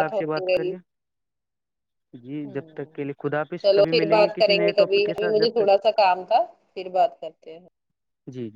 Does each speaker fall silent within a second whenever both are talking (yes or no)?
no